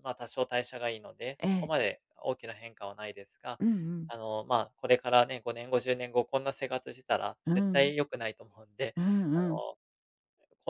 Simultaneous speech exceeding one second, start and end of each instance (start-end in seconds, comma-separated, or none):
none